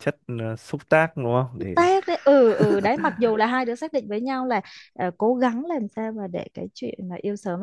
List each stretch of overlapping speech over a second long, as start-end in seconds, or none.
none